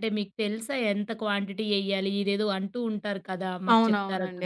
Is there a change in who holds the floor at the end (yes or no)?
yes